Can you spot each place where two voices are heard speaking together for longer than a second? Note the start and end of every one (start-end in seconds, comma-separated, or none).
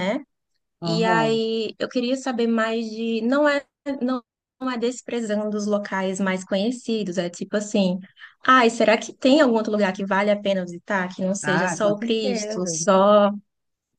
11.4-12.8